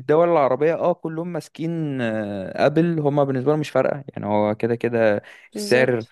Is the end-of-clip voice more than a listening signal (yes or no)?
no